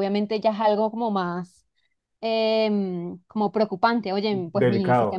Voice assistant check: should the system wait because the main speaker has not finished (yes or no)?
no